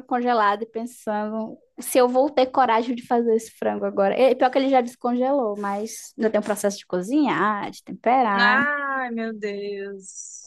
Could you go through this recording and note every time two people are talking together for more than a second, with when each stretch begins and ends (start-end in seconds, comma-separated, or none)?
none